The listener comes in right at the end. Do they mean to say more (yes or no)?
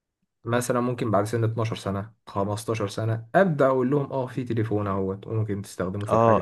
yes